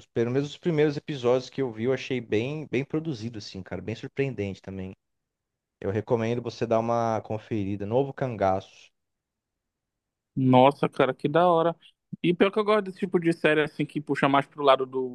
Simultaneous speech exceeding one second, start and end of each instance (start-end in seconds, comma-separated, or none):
none